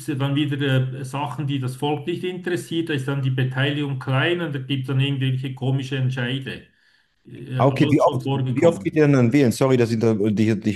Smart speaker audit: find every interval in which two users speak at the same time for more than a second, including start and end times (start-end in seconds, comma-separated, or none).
7.6-9.1